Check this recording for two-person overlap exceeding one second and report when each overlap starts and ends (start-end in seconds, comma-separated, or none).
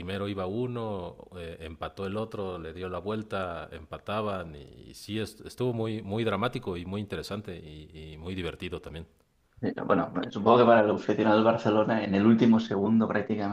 none